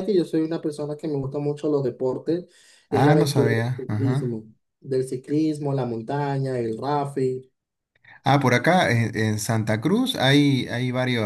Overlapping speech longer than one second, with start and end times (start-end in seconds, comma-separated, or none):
2.9-4.4